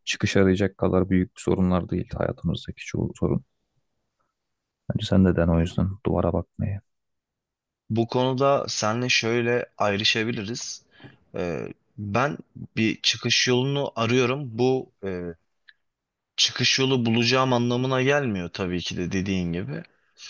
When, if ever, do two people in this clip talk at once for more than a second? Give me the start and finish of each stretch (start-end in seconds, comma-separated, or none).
none